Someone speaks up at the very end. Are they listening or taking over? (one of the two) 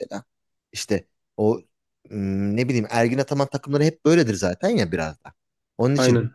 listening